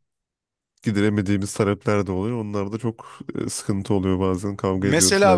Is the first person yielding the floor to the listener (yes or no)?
yes